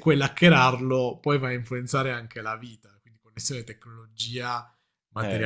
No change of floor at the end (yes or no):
no